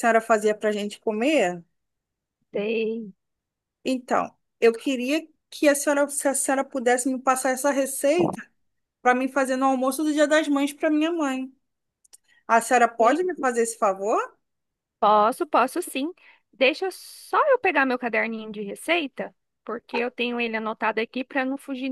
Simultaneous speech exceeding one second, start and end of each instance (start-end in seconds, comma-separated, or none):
none